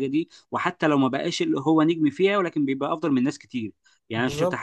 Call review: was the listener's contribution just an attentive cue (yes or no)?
yes